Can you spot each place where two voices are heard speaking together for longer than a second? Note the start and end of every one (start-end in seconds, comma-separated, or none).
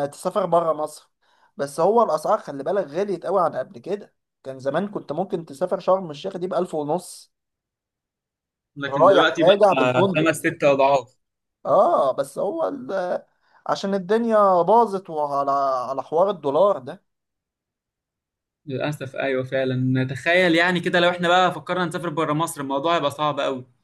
8.9-10.3